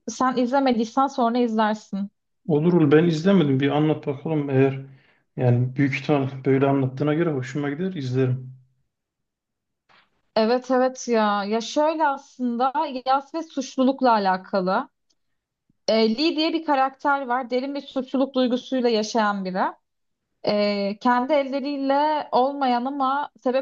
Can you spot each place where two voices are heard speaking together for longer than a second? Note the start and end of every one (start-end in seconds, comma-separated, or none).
none